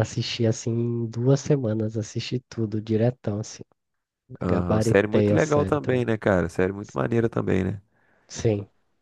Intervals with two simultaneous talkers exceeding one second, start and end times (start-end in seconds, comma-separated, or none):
4.5-6.0